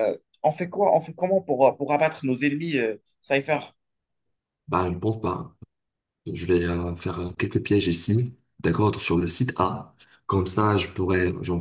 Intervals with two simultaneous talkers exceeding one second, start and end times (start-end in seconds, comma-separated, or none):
none